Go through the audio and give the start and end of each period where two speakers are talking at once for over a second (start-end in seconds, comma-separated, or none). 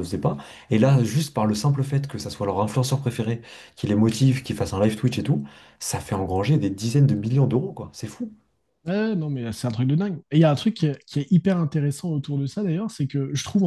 none